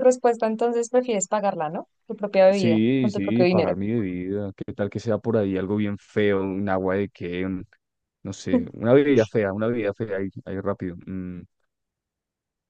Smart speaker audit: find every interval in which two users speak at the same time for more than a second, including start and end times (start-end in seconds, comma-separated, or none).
2.5-3.7